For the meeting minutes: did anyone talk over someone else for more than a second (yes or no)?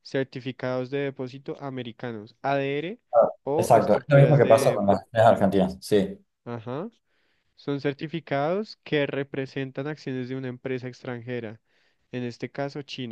yes